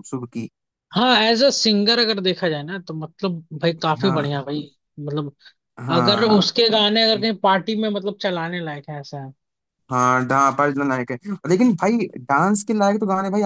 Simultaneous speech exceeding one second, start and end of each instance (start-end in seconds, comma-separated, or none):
none